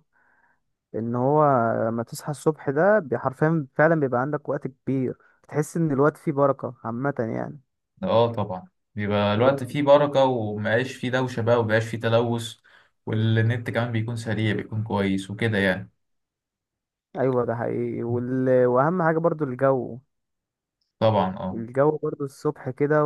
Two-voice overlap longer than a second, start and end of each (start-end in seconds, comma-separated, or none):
none